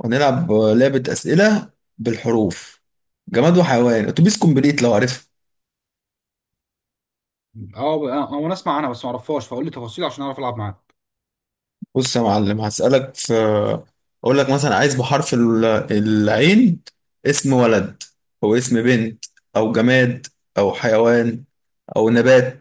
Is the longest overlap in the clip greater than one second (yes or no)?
no